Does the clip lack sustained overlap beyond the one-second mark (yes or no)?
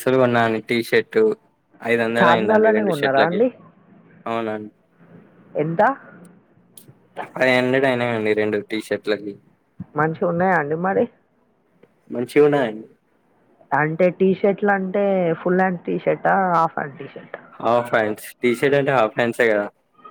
no